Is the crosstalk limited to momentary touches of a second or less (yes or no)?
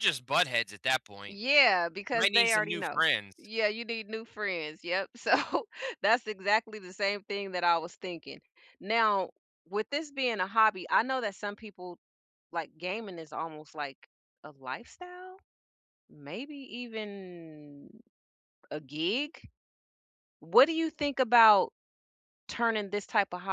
no